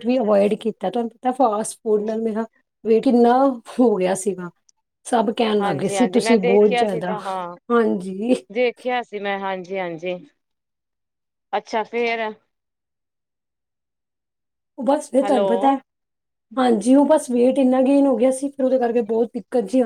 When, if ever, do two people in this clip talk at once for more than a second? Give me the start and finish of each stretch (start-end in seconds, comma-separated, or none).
5.6-7.2